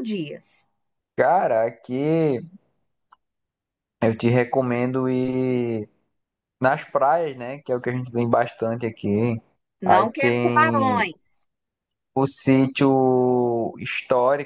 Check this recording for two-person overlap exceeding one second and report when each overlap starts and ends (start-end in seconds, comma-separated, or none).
9.8-11.1